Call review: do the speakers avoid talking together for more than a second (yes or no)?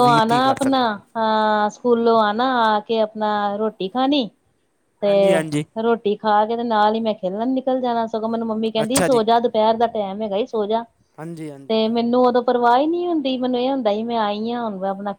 yes